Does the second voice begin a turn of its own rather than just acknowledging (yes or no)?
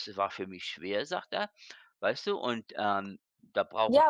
yes